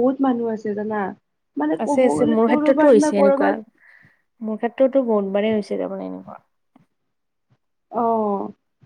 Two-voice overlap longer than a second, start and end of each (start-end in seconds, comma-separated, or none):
1.8-3.5